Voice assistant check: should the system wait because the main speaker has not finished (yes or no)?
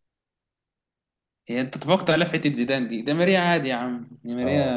yes